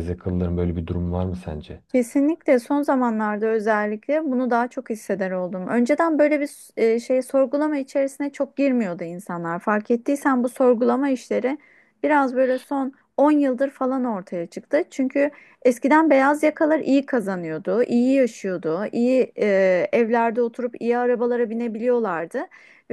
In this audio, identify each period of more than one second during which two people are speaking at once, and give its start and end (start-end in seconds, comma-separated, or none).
none